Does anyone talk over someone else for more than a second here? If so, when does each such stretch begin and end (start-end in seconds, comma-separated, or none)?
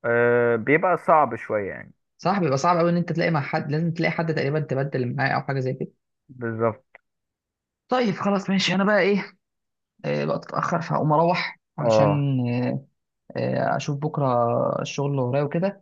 none